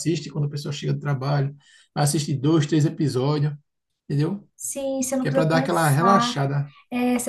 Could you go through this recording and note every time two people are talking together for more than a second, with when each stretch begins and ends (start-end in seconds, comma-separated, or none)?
5.2-6.4